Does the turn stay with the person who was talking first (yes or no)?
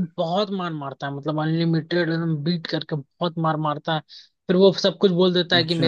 yes